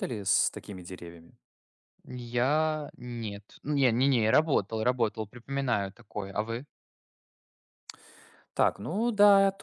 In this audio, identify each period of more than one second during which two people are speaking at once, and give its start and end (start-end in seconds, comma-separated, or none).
none